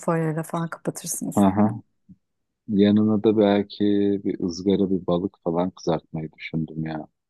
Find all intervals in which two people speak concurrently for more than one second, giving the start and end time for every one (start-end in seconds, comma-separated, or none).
none